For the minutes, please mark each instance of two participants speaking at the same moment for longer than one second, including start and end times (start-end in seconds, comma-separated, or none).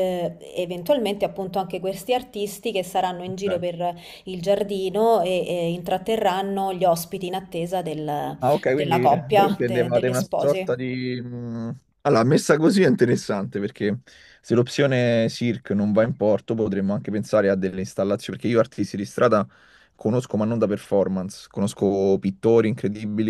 8.4-10.8